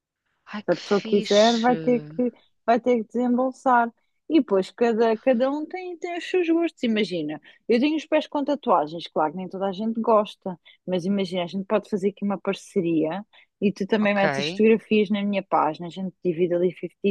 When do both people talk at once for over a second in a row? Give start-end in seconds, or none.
0.6-2.2